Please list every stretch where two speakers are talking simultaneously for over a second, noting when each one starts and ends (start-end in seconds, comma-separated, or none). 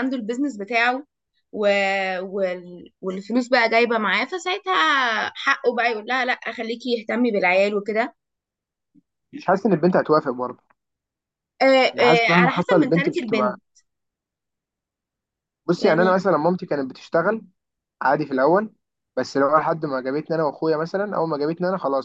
11.9-13.6